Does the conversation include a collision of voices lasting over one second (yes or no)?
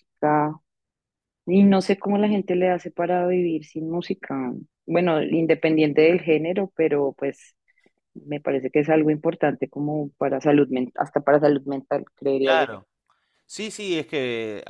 no